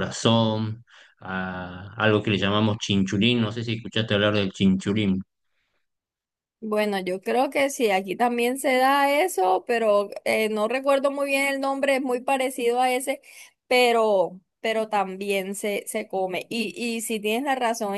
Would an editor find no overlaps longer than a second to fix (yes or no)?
yes